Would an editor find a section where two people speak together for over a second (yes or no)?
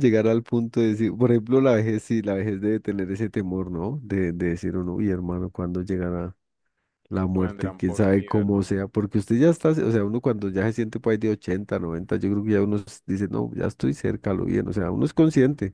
yes